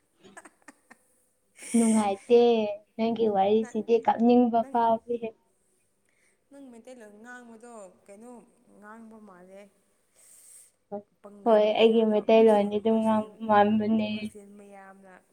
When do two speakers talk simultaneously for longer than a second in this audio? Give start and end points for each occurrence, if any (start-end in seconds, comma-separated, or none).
11.4-13.3